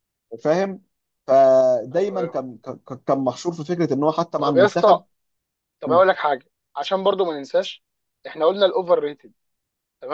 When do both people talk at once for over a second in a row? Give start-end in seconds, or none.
none